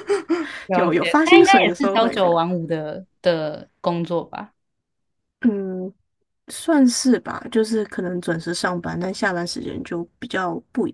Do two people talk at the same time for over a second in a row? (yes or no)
yes